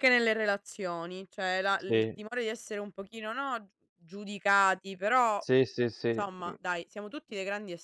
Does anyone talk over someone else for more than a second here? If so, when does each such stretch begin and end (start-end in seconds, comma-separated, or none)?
none